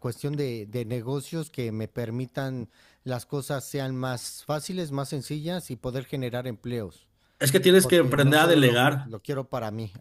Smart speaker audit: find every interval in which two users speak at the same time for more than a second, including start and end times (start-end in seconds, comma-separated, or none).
7.8-9.1